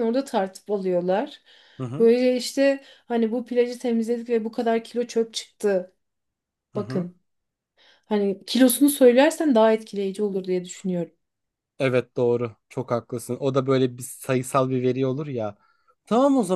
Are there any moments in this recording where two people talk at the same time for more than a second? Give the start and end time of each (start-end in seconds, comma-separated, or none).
none